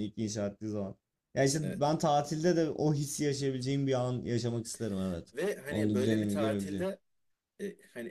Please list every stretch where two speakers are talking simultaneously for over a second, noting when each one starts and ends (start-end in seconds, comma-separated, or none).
5.3-6.9